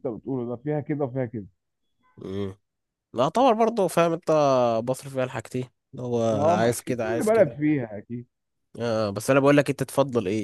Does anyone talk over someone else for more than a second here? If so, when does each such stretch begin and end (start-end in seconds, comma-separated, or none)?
6.3-7.6